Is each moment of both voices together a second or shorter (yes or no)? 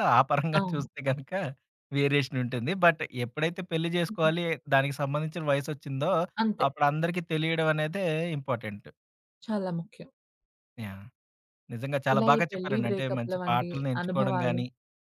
no